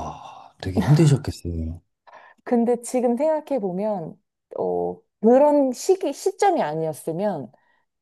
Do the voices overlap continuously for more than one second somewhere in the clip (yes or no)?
no